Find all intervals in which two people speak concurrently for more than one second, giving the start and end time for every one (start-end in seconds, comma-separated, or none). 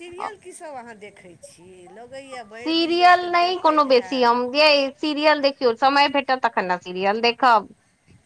2.6-4.3